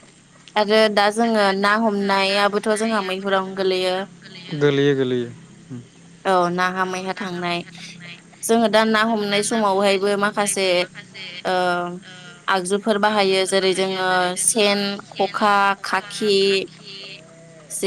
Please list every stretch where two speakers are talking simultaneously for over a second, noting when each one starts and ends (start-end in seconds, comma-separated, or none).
1.3-4.0